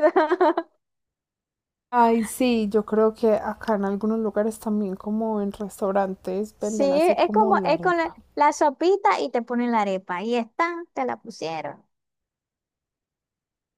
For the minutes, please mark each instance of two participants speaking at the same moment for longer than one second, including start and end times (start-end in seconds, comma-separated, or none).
6.6-8.2